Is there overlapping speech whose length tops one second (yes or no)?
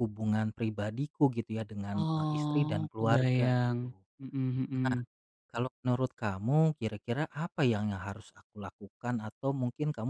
yes